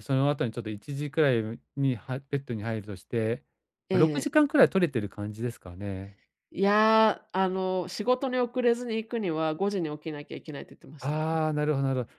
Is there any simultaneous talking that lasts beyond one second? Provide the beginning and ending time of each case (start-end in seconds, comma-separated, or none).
none